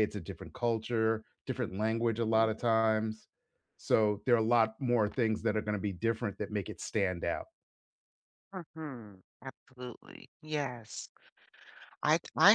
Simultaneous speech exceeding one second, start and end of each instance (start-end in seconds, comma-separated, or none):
none